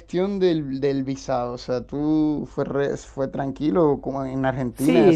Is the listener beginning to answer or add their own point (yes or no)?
yes